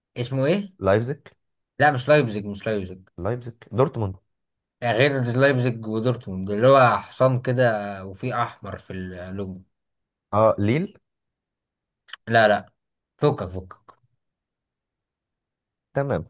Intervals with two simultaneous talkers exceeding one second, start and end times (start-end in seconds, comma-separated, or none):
none